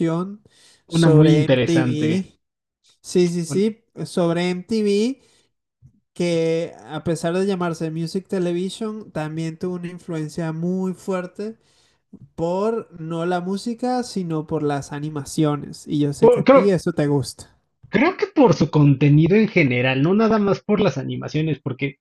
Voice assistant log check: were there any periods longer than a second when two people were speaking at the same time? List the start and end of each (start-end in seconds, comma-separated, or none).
0.9-2.3